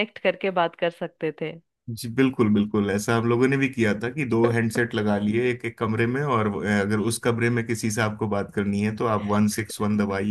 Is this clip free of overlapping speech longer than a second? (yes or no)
yes